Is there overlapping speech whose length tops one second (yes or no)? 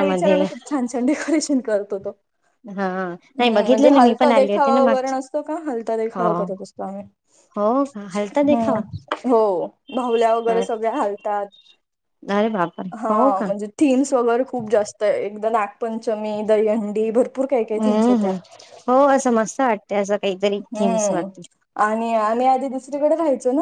yes